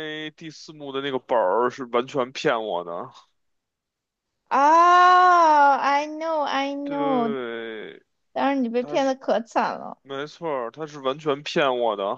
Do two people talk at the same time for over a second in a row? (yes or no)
no